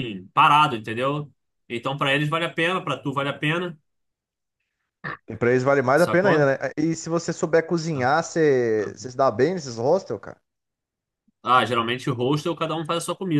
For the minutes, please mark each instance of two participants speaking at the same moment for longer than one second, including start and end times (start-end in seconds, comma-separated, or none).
none